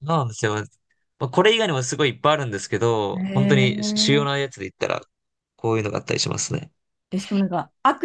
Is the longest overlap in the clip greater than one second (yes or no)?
yes